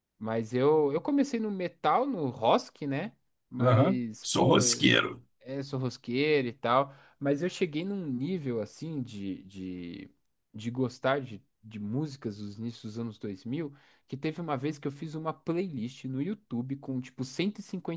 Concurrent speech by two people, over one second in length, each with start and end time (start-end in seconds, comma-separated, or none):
3.6-5.2